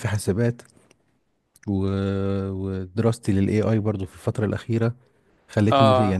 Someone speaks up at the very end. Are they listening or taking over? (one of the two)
taking over